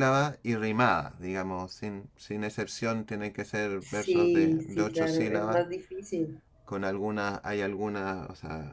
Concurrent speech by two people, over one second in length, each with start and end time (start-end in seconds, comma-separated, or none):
3.8-5.6